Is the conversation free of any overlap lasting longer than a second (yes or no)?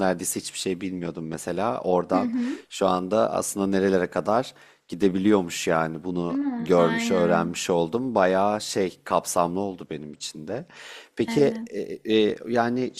no